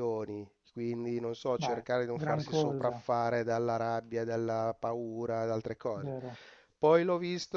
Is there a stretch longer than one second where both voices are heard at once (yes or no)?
yes